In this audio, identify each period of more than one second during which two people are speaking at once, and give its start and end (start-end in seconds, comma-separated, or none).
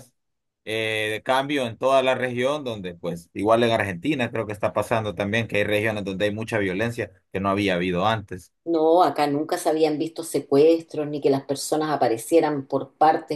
none